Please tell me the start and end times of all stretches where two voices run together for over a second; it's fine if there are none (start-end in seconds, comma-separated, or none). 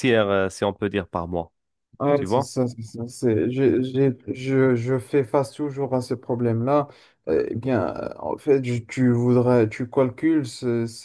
none